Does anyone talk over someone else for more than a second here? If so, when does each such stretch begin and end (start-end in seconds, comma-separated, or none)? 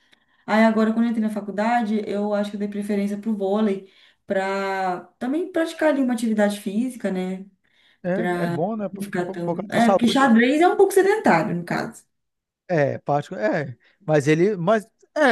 8.1-10.2